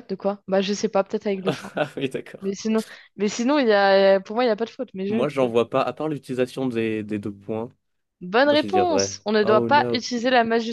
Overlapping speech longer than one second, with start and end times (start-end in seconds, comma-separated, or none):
8.4-10.1